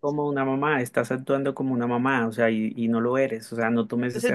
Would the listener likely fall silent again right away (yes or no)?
no